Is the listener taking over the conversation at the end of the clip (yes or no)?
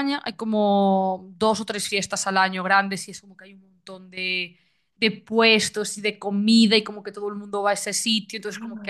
no